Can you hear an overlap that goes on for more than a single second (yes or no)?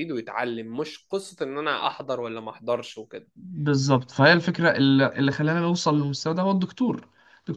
no